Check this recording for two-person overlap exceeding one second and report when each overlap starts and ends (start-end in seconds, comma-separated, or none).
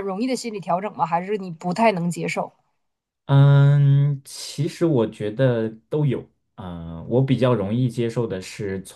none